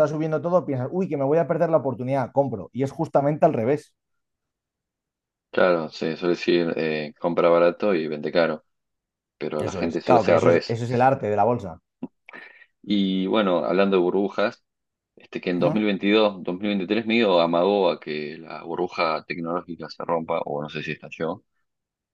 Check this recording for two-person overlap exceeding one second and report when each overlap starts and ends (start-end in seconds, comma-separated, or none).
9.6-10.8